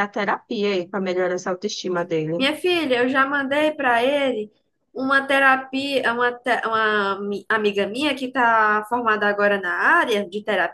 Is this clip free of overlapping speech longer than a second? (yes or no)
yes